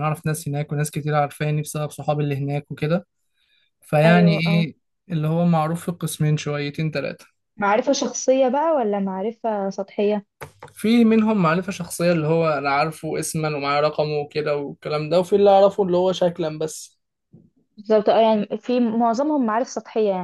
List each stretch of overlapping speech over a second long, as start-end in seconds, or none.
none